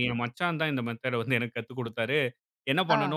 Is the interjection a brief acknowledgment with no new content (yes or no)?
yes